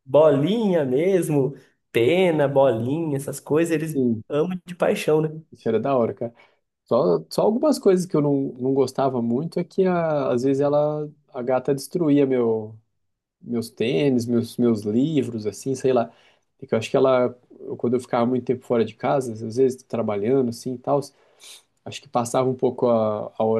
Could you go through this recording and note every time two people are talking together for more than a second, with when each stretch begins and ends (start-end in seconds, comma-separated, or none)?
none